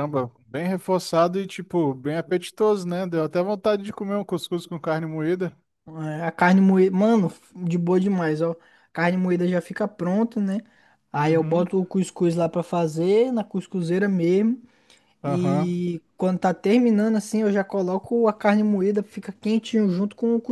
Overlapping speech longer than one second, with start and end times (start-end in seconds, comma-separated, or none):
none